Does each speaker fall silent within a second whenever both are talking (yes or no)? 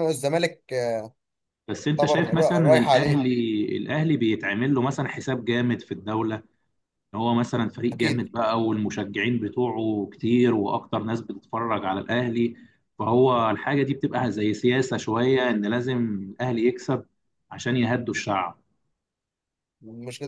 no